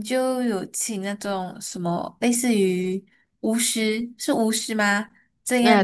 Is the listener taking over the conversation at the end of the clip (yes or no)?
no